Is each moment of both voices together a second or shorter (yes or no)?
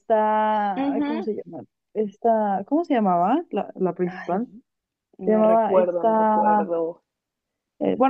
no